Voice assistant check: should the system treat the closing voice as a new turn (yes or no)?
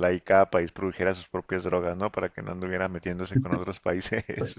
yes